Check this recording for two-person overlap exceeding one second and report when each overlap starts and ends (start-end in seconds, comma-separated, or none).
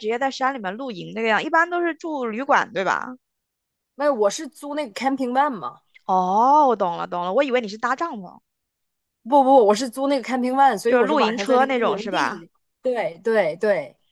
10.9-12.4